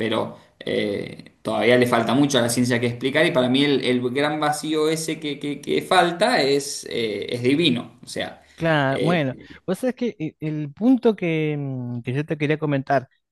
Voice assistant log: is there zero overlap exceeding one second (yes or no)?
yes